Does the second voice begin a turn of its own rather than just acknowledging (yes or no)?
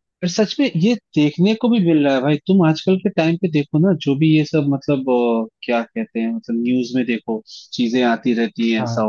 no